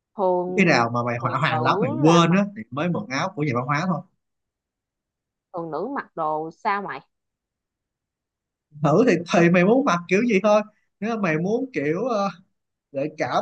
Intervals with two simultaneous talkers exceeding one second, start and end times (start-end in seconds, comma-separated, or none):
0.6-2.5